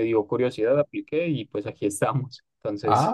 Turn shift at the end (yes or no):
yes